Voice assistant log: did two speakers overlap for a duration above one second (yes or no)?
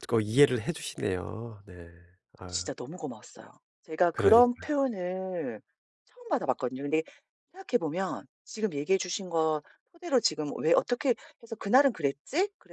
no